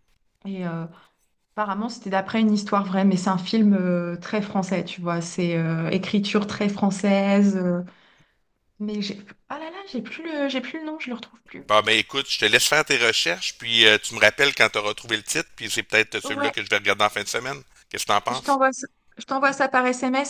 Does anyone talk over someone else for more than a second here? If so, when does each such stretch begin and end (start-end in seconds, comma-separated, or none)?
none